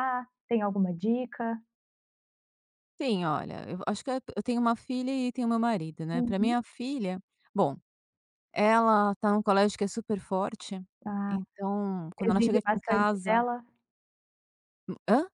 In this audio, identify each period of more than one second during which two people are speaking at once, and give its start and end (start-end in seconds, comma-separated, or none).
12.2-13.4